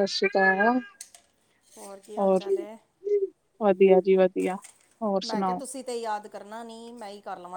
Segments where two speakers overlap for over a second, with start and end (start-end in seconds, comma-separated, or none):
none